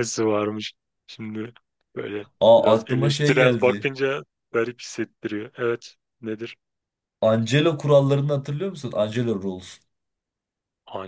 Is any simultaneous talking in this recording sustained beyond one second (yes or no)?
yes